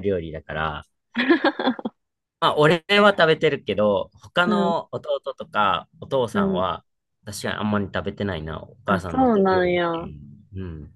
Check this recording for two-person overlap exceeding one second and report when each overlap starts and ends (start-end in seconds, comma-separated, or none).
8.9-10.1